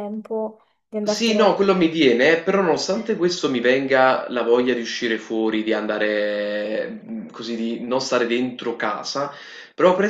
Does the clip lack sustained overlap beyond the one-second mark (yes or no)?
yes